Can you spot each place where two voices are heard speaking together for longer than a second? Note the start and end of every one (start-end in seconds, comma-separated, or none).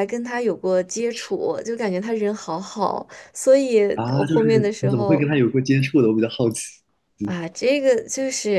3.9-5.3